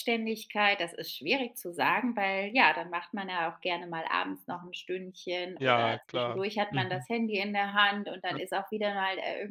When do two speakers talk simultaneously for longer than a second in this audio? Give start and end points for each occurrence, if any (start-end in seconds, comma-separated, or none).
5.5-7.0